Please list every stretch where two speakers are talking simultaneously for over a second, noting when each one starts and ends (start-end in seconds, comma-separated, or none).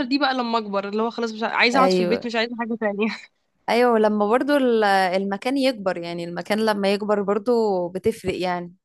none